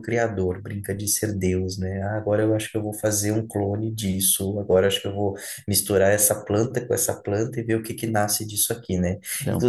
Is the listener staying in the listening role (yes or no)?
yes